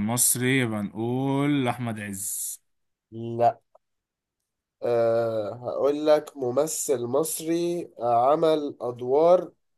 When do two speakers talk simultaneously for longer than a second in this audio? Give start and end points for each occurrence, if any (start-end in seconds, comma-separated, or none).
none